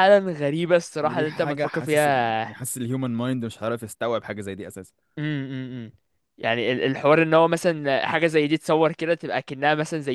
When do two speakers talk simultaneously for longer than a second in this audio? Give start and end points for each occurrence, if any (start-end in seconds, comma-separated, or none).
1.0-2.6